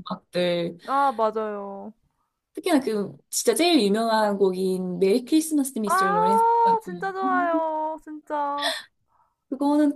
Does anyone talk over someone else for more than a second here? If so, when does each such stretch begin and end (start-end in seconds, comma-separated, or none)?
none